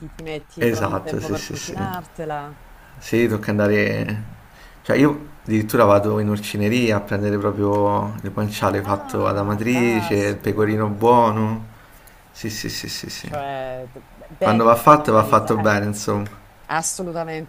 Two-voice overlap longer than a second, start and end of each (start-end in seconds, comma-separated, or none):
0.6-1.9, 8.8-11.0, 14.4-15.7